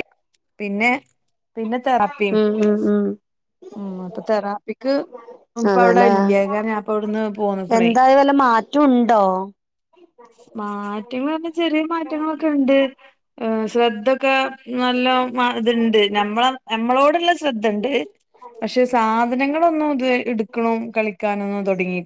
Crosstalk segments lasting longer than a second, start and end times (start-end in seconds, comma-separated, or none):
none